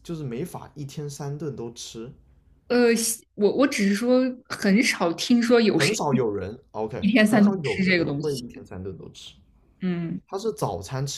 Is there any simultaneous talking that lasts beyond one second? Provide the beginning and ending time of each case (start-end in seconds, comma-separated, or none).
7.0-8.4